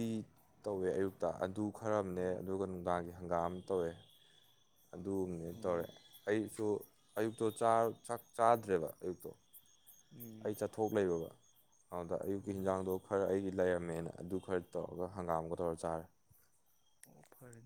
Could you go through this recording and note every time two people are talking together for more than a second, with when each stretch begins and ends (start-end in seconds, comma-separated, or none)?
none